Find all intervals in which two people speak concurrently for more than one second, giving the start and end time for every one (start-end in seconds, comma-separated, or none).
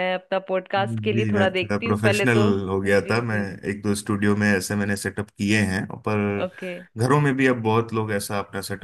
0.8-3.4